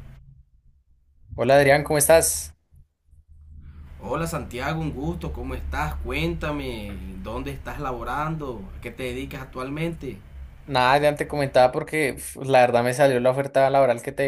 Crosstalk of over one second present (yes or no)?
no